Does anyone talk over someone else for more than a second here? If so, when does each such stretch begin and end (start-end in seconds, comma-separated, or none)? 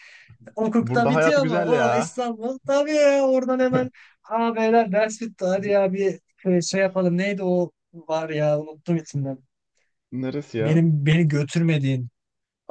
0.8-2.1